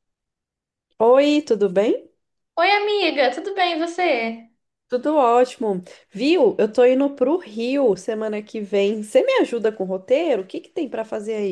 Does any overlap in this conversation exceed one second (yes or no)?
no